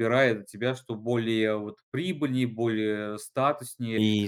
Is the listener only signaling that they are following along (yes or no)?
no